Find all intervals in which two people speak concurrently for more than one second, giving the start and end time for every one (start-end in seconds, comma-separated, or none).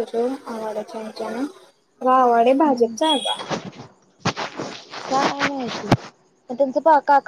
none